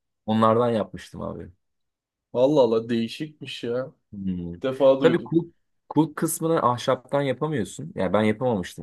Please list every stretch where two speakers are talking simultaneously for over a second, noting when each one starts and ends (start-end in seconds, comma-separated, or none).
none